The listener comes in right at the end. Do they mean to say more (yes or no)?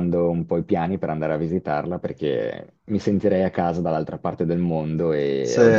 no